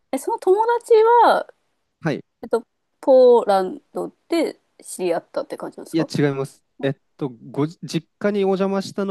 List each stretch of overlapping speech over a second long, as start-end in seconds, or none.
none